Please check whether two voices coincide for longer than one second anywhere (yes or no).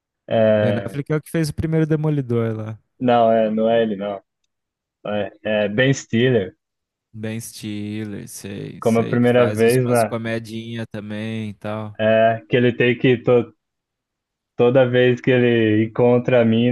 yes